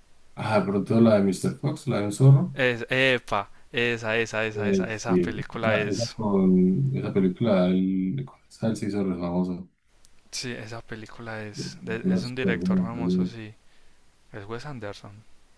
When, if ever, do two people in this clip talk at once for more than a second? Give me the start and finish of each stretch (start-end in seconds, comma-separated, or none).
4.5-6.2, 11.6-13.3